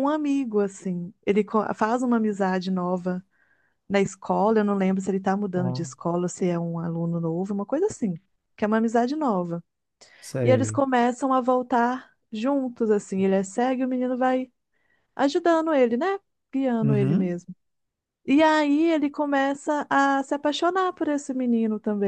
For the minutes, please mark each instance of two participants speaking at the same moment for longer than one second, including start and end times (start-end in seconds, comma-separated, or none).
none